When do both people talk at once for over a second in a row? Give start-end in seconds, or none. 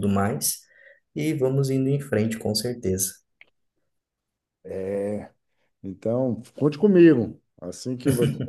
none